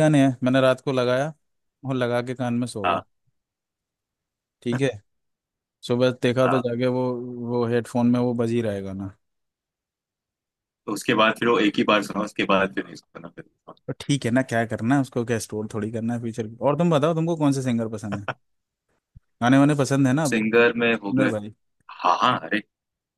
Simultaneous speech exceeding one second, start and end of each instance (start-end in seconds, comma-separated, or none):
none